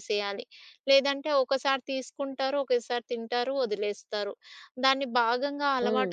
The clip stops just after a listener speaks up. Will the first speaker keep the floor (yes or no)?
yes